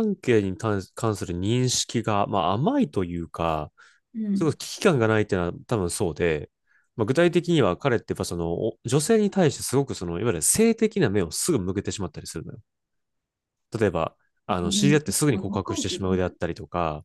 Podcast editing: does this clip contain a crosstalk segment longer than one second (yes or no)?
yes